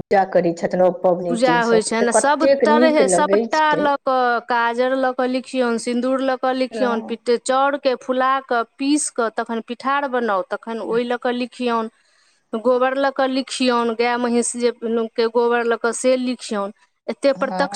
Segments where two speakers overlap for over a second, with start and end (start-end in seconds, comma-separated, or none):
1.3-3.9